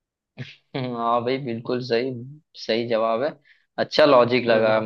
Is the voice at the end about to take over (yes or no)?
no